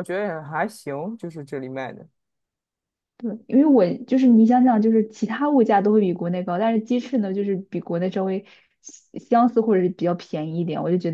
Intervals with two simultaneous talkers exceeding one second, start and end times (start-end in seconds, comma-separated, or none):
none